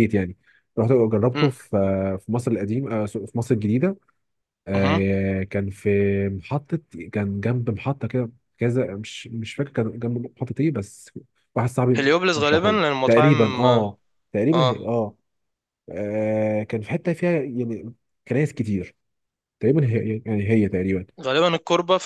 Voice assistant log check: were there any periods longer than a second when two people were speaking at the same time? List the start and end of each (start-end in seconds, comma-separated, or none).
11.9-13.8